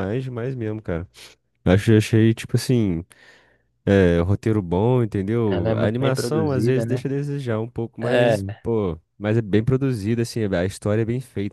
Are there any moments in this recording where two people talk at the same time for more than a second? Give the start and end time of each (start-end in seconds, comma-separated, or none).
5.5-7.1